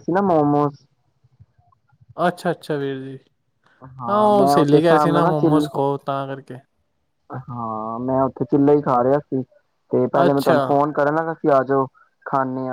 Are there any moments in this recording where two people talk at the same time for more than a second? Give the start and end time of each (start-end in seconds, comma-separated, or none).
4.1-5.7